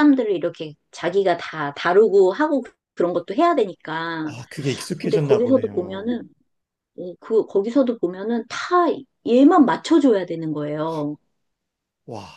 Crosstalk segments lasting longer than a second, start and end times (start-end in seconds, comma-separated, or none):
5.0-6.2